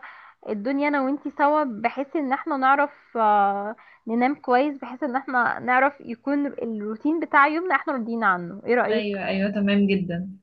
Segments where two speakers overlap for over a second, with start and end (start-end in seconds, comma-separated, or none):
none